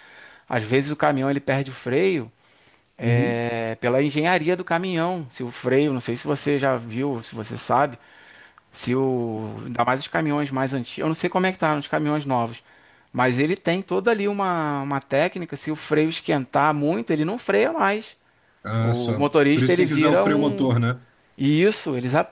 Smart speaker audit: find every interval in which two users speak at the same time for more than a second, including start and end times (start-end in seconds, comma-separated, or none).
18.8-20.7